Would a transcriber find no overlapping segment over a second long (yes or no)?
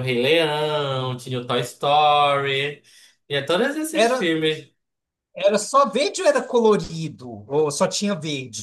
yes